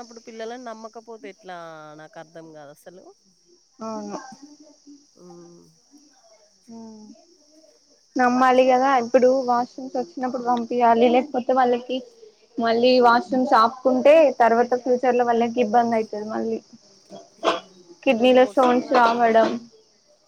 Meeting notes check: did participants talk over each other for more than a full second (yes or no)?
yes